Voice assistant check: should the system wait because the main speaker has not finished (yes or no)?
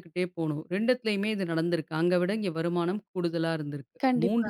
yes